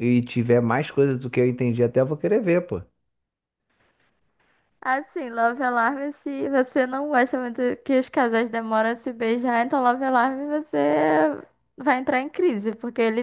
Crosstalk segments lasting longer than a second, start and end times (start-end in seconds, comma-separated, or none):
none